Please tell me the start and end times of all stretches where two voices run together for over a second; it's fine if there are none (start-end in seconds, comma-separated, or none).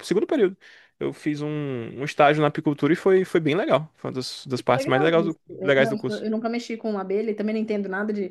4.7-6.2